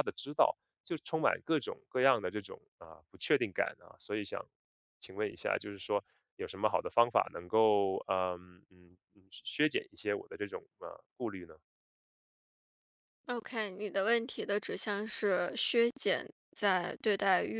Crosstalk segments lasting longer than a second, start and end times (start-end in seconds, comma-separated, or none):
none